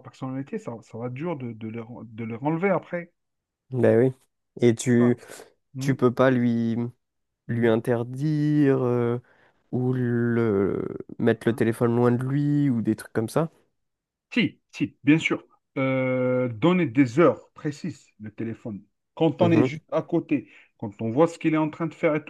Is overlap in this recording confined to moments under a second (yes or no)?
yes